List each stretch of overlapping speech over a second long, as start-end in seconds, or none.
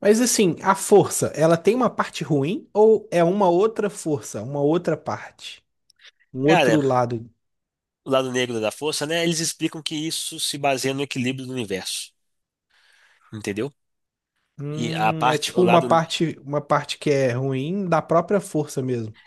14.7-16.0